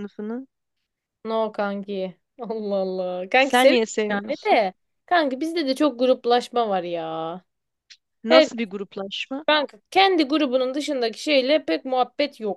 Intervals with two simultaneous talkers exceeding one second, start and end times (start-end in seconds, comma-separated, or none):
3.4-4.6